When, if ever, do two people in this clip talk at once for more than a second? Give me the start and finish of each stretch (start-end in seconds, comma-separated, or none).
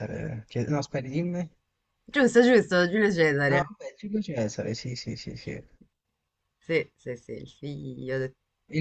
none